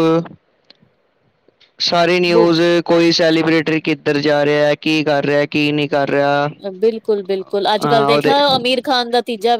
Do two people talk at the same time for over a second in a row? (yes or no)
no